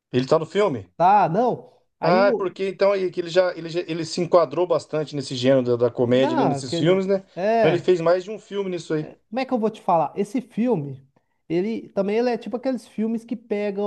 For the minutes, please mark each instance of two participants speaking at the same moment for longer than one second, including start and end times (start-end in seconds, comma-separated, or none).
6.0-7.9